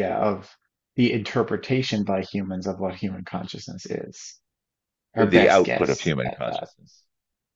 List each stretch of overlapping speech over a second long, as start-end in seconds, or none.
5.2-6.6